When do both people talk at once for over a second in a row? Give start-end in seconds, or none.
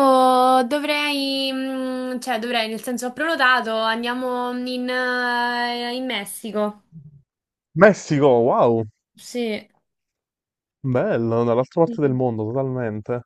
none